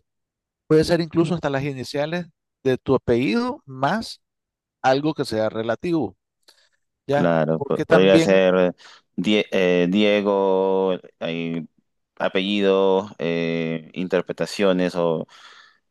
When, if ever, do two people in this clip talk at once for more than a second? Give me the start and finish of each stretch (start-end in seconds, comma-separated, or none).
7.1-8.4